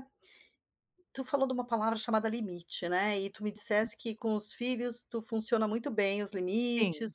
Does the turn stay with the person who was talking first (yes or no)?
yes